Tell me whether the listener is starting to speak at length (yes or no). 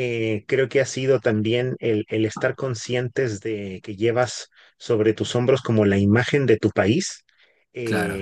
no